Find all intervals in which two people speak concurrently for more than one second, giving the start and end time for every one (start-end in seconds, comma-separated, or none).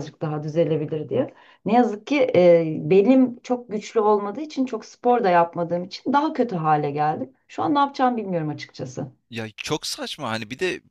none